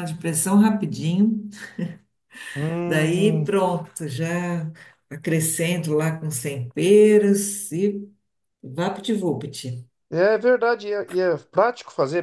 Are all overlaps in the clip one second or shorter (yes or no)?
yes